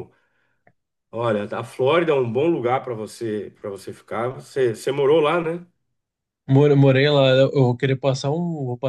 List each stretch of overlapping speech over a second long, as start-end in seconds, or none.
none